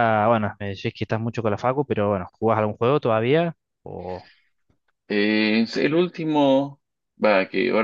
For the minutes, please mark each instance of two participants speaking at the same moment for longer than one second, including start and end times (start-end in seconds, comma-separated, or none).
none